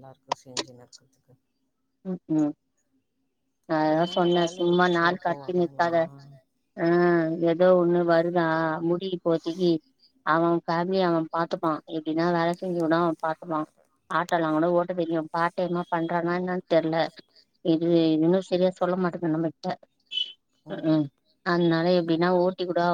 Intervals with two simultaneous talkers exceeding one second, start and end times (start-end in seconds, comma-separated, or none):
3.9-5.9